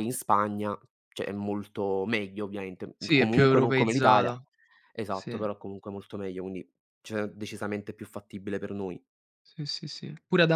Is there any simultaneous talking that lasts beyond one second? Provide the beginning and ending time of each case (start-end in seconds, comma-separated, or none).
3.0-4.3